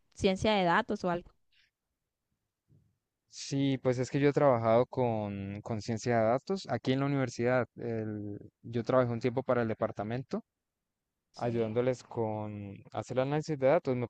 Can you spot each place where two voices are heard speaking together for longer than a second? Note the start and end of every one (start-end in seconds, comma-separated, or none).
none